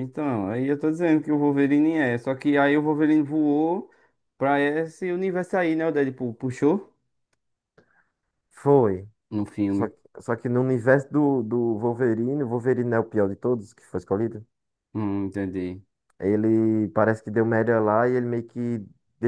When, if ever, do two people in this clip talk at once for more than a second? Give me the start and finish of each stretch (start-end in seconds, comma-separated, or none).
none